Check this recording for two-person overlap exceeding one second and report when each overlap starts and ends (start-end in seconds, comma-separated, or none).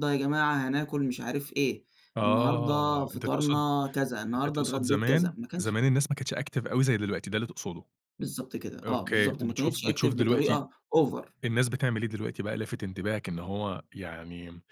2.2-3.6, 4.3-5.8, 8.8-10.6